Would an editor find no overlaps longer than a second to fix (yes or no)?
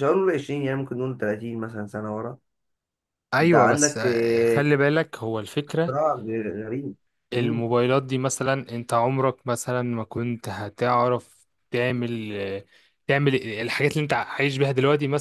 no